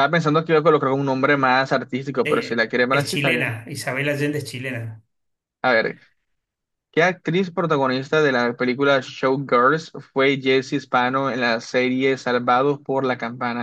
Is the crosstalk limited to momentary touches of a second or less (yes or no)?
no